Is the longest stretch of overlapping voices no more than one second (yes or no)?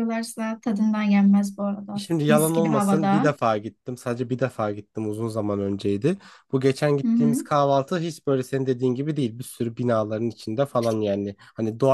no